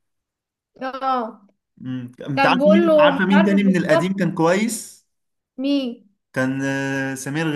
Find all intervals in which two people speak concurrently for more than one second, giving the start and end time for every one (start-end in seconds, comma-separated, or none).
2.4-4.2